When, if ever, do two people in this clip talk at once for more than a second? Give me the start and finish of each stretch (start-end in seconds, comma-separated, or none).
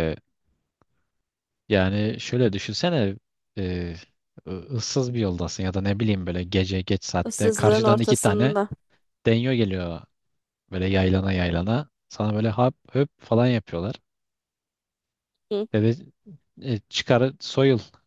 7.2-8.6